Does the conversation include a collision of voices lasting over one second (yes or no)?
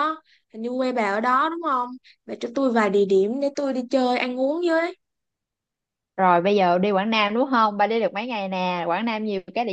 no